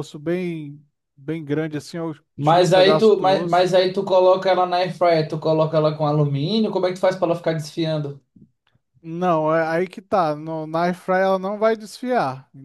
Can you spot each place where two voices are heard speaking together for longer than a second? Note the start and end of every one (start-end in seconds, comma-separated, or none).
2.4-3.7